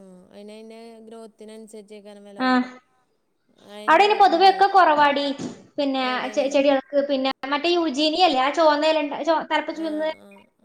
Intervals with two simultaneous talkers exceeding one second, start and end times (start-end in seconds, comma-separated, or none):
none